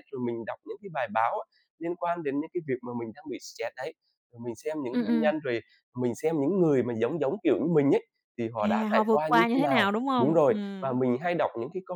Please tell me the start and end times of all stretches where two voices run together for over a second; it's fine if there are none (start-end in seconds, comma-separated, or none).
8.6-11.0